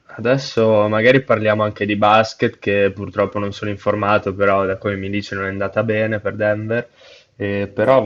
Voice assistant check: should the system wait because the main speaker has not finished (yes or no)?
yes